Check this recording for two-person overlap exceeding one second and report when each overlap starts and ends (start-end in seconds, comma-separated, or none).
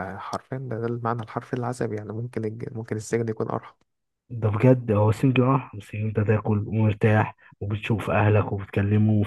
none